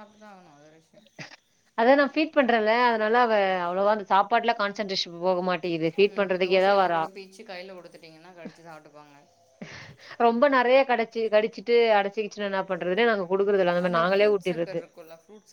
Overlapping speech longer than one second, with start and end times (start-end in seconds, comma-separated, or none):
none